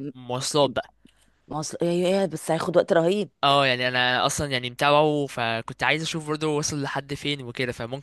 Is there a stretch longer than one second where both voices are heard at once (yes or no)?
no